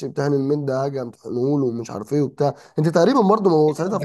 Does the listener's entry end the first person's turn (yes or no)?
yes